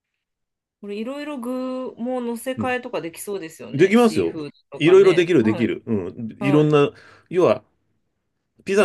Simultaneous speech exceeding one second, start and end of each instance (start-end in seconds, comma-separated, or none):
3.7-5.7